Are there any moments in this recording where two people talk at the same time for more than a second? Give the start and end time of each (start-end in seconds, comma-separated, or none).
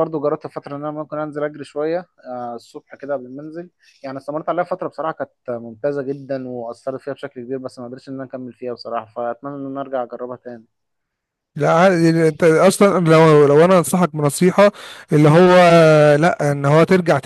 none